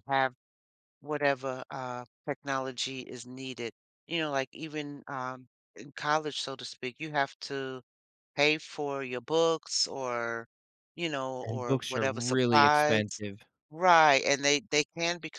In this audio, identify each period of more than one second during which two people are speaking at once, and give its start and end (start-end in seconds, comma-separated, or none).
11.4-13.0